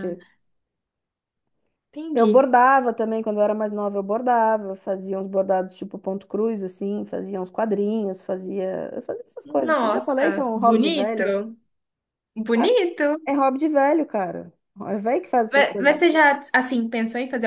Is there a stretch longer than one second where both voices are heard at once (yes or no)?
yes